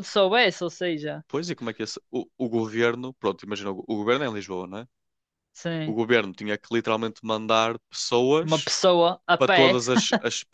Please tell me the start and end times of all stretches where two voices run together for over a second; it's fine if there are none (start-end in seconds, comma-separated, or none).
none